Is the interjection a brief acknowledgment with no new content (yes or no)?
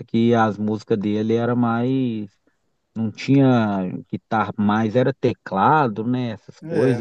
no